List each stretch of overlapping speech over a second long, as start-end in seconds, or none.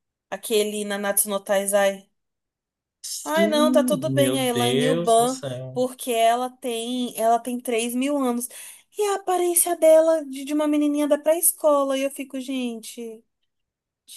3.2-5.8